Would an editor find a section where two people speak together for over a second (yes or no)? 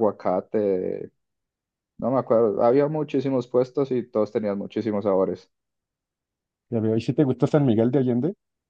no